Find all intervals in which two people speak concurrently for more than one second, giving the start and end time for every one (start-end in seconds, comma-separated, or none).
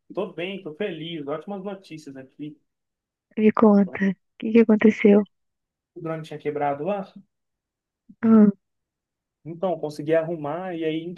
none